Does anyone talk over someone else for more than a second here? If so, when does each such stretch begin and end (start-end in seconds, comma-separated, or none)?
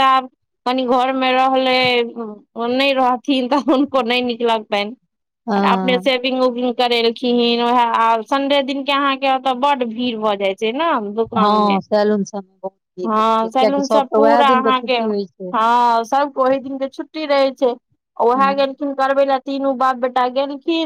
13.1-15.0